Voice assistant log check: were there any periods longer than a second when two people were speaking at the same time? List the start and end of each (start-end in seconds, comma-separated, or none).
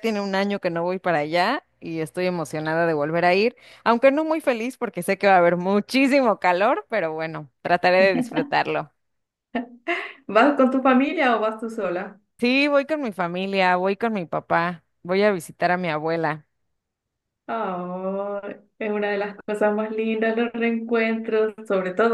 none